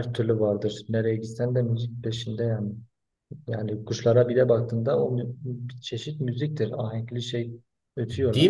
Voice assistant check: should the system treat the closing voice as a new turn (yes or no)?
yes